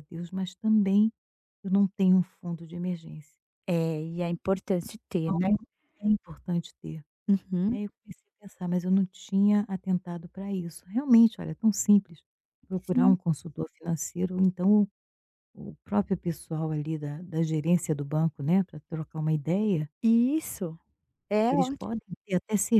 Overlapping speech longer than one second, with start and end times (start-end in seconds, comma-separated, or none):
none